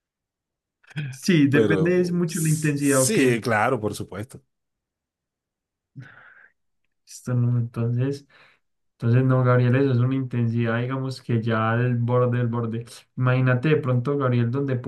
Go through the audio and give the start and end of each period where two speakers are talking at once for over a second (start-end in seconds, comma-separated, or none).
1.5-3.2